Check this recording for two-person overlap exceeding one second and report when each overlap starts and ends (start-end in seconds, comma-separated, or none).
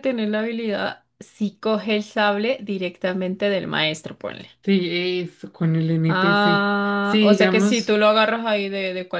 6.1-8.0